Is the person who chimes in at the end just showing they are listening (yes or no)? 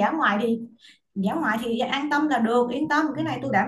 no